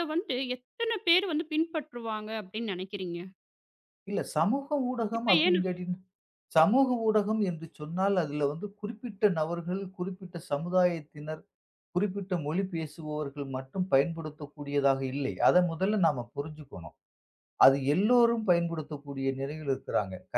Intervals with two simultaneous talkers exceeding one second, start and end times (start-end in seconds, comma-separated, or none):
none